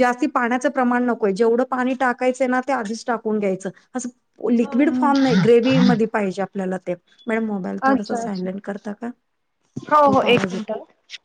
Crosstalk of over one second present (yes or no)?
no